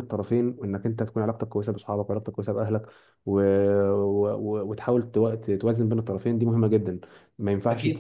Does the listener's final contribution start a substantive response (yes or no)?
yes